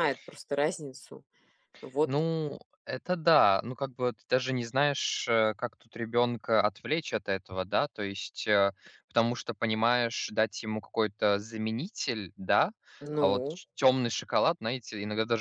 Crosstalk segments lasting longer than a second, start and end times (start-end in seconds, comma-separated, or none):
none